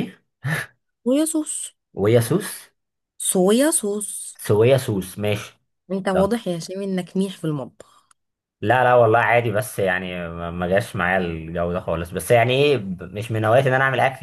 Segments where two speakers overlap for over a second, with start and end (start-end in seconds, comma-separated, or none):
none